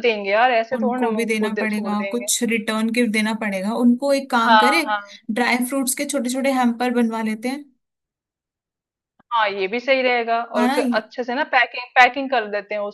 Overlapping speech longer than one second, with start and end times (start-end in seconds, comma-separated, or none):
0.8-2.3